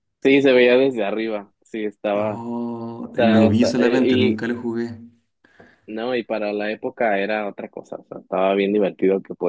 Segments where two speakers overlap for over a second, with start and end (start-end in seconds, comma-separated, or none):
3.1-4.4